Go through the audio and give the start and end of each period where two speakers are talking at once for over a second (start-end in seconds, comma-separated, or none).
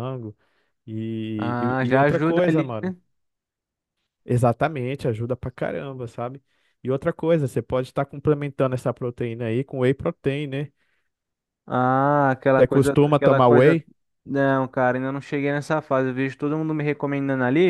1.4-2.8, 12.6-13.8